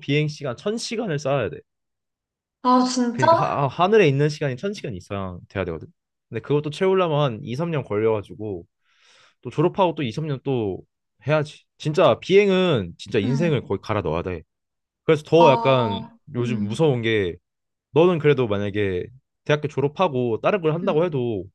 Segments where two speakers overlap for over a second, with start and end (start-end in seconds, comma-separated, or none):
15.3-16.9